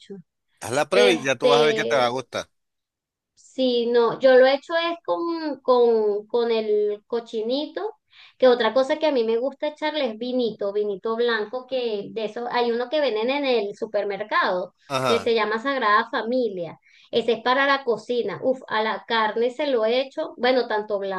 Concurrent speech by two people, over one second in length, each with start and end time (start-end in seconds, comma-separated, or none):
0.9-2.1